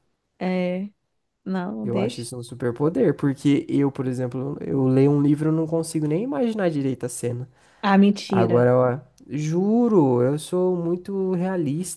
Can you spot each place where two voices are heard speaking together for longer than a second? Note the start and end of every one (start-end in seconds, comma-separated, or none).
none